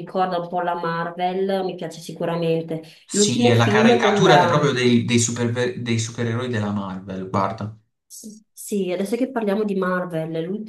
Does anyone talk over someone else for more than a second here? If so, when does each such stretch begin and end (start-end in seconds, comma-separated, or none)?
3.0-4.7